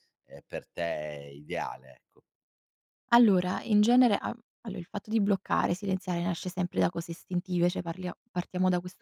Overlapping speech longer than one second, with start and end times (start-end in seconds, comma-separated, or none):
none